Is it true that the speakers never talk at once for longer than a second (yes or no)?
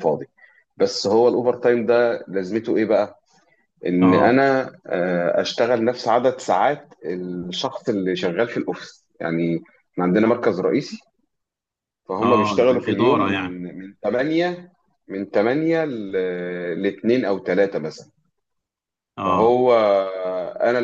no